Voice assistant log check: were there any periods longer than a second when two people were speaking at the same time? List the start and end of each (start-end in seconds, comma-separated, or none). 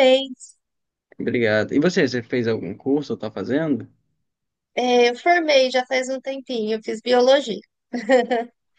none